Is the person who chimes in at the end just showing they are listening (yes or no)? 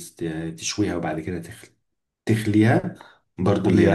no